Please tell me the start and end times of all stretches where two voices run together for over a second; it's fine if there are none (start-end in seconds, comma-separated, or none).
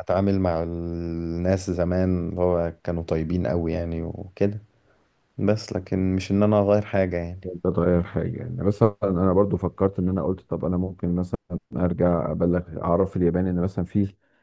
none